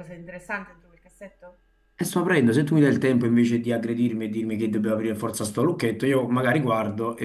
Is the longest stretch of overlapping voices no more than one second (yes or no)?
yes